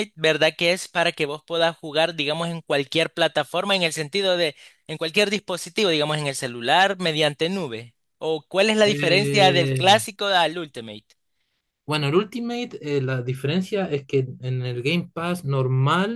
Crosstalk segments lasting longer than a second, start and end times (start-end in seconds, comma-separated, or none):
8.8-10.0